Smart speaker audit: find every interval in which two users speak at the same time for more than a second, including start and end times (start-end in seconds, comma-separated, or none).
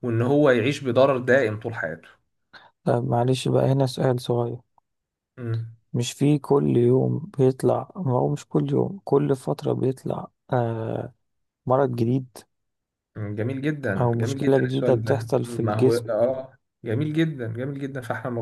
14.0-16.0